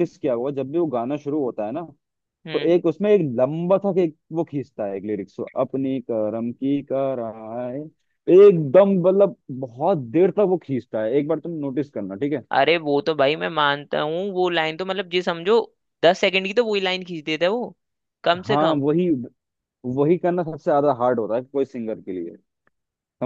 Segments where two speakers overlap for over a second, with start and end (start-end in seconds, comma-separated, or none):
none